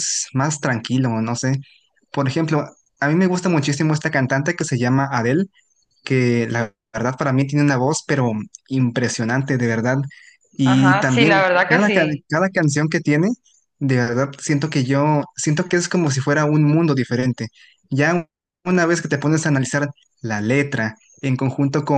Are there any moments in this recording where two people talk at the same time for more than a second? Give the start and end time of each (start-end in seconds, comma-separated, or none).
10.6-12.3